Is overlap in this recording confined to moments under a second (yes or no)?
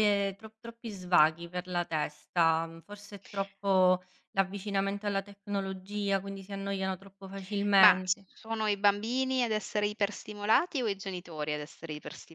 yes